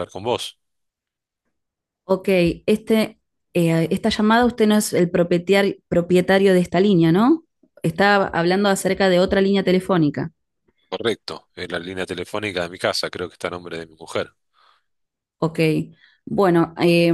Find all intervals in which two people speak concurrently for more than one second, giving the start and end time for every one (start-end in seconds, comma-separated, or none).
none